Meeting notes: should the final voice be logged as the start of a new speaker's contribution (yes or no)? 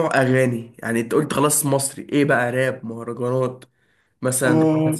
yes